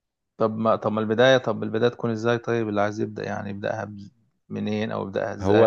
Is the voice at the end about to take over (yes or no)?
yes